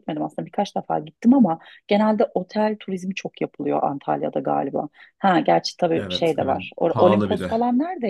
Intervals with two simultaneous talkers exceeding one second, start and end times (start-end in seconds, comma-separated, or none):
5.9-7.5